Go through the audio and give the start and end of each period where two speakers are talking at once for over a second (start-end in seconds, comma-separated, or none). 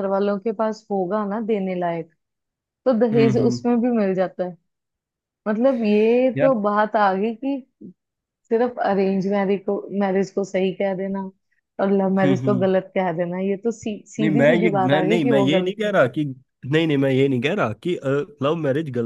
14.2-15.9